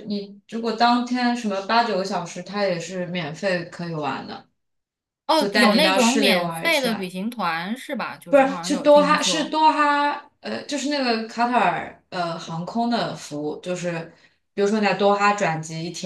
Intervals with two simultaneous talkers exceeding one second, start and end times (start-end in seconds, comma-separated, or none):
5.4-7.1, 8.3-9.6